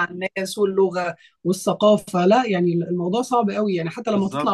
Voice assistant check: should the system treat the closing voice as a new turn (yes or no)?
yes